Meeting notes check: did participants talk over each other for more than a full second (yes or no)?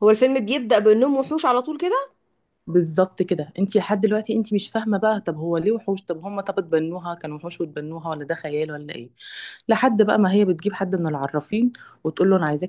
no